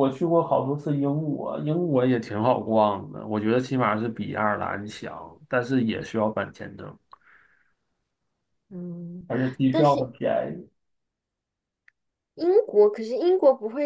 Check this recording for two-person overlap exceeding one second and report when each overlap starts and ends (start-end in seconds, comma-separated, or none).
none